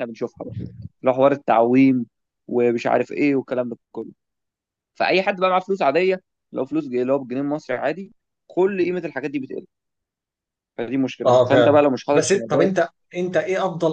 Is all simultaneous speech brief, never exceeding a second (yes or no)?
no